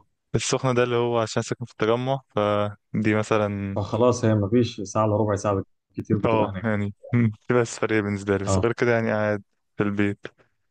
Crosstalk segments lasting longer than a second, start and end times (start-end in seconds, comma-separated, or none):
none